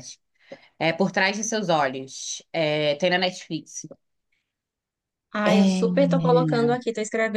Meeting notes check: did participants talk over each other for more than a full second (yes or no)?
no